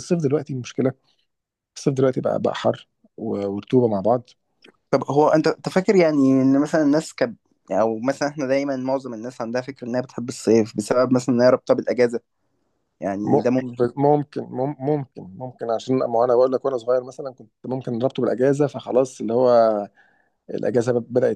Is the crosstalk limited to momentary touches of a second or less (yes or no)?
yes